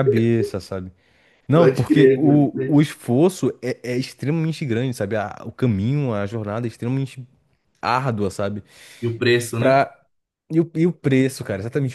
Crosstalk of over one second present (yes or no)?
yes